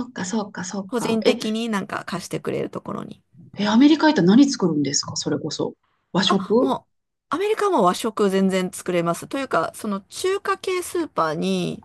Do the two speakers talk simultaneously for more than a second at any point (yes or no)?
no